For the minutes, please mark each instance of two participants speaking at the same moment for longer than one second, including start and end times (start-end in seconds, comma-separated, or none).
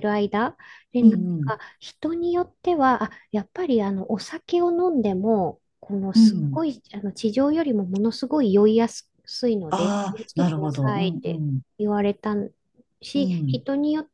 9.7-11.6